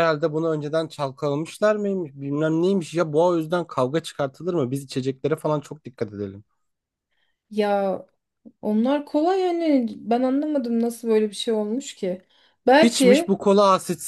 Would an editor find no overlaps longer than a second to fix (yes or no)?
yes